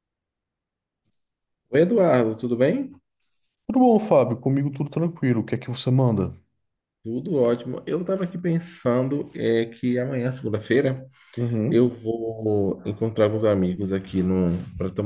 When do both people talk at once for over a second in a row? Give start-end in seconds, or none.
none